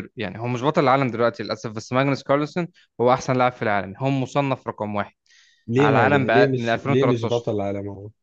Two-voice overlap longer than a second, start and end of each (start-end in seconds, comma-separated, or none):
5.8-7.5